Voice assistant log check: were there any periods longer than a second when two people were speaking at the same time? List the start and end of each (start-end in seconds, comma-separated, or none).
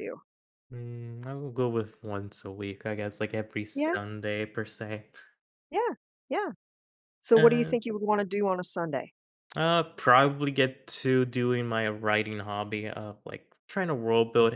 none